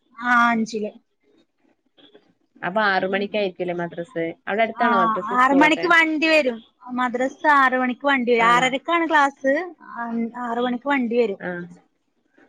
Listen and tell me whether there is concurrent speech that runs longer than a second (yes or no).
no